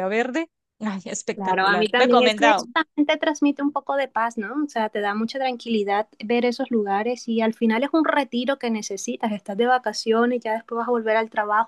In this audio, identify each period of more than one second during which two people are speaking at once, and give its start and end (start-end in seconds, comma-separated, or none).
1.3-2.7